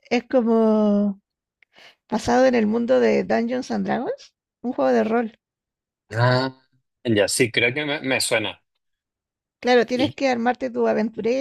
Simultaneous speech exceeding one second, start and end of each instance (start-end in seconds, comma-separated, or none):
none